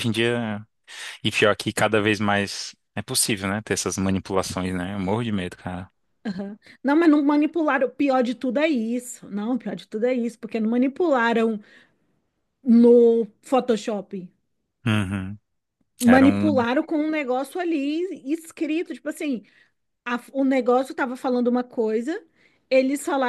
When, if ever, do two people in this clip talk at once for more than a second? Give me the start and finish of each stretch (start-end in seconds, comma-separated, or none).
none